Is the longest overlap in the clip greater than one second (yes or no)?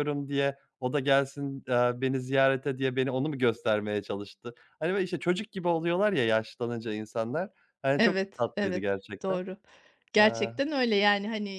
yes